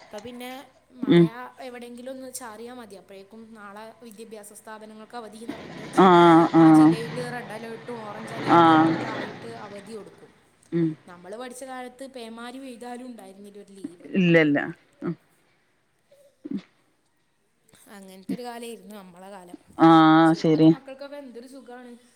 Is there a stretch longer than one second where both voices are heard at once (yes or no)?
no